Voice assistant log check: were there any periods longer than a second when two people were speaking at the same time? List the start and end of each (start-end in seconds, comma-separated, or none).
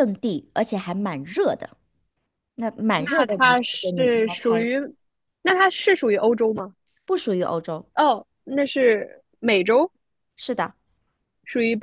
3.0-4.7